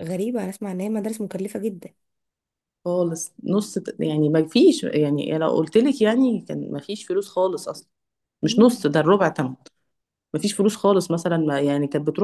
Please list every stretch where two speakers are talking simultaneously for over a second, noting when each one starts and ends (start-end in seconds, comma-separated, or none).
none